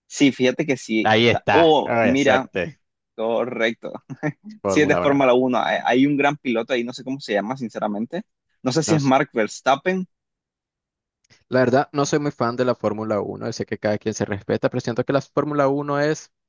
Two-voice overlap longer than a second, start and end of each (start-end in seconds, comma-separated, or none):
1.0-2.5